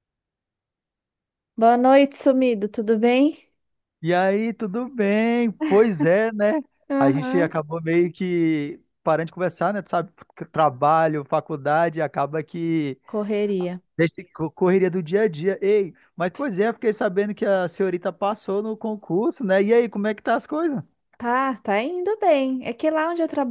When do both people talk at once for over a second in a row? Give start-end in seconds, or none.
none